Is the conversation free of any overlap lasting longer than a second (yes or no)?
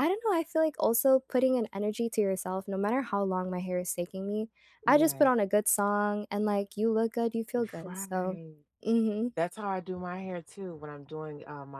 yes